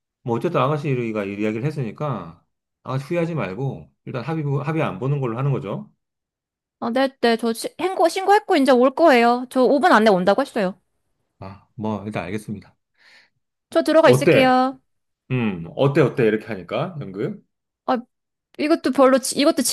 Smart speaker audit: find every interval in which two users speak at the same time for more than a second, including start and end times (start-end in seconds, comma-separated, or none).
none